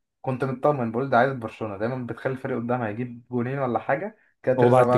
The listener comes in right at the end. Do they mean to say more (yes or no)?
yes